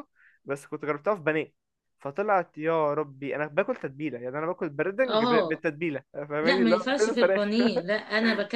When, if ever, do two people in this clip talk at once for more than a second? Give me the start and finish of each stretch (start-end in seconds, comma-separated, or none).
6.4-7.7